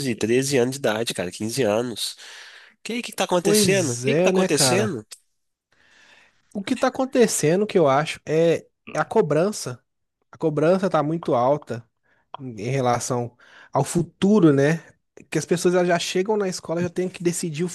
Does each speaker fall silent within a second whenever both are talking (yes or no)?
no